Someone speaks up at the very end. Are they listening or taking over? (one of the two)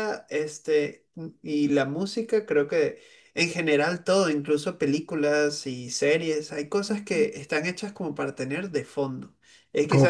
listening